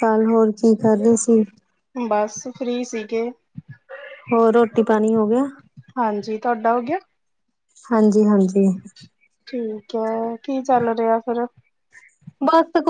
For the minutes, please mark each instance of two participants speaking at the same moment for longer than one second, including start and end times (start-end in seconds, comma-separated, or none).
none